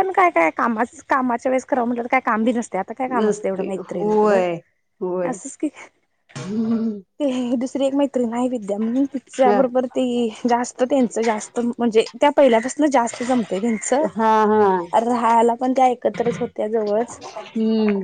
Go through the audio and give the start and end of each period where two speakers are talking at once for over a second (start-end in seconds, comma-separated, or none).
3.2-4.4